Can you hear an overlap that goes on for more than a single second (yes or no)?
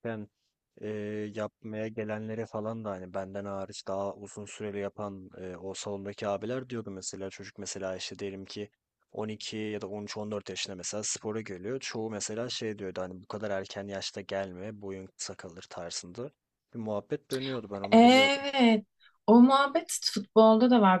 no